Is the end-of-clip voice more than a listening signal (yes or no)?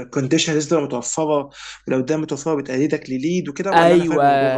yes